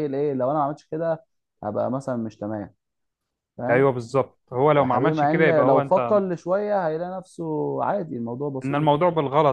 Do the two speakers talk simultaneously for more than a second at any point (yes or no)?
yes